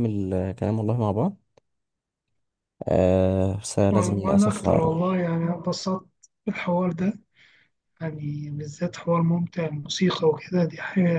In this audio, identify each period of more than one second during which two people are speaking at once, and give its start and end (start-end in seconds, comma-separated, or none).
3.9-5.2